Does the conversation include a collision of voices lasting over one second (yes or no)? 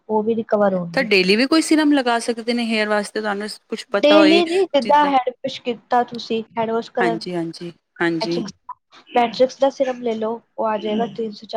yes